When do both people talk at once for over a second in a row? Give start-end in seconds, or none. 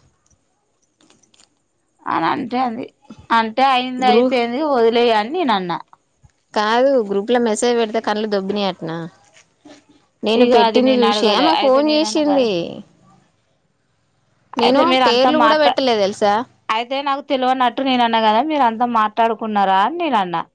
10.4-12.5